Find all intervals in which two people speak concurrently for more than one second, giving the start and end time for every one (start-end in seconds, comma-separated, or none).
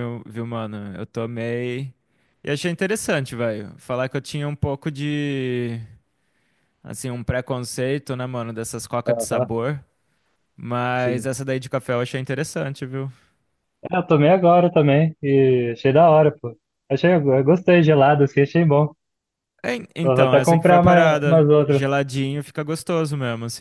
20.0-21.8